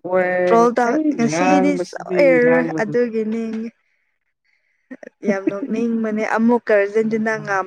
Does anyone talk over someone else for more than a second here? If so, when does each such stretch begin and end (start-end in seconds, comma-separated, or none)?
0.9-2.9